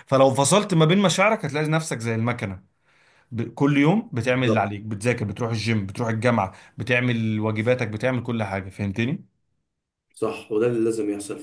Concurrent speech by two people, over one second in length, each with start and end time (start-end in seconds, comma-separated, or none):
none